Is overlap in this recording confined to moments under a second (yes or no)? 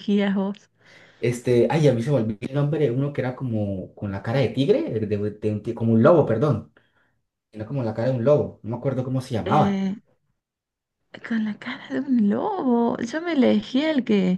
yes